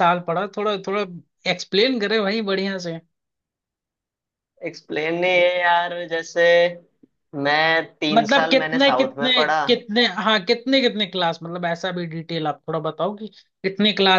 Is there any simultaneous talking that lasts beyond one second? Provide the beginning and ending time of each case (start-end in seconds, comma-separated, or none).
8.1-9.6